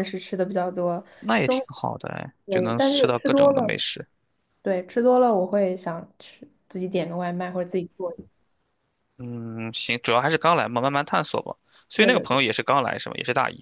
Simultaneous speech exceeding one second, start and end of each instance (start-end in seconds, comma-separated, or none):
2.5-3.8